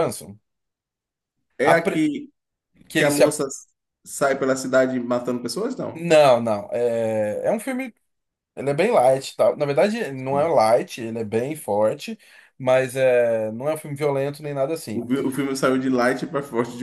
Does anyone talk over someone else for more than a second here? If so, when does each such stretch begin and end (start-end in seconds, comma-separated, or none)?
none